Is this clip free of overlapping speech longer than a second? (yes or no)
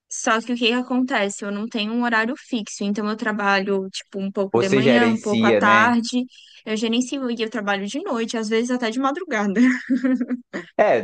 no